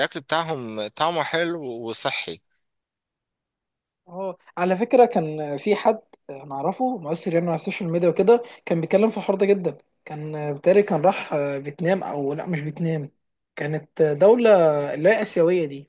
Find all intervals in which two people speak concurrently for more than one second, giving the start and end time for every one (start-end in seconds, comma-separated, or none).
none